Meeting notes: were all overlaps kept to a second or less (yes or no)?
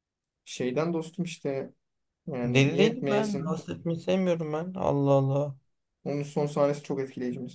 no